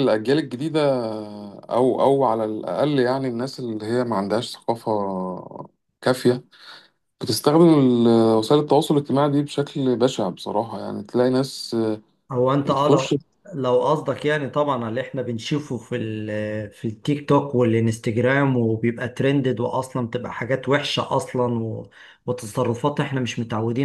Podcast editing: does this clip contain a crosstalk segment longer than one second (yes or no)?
no